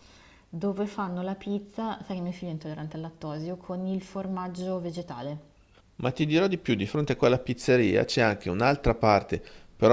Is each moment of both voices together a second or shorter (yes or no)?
yes